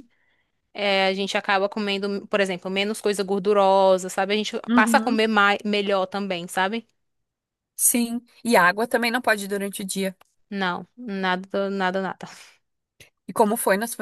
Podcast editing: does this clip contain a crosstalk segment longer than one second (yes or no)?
no